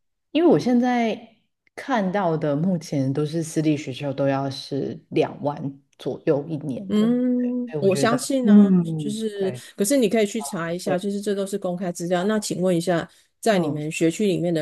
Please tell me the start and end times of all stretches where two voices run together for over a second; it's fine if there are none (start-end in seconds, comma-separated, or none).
6.9-9.6